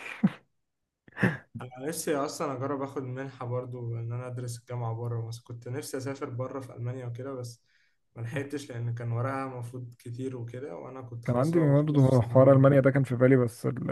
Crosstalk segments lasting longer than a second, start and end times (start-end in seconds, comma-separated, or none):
11.2-12.8